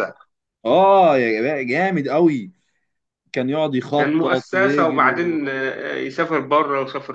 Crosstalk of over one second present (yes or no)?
yes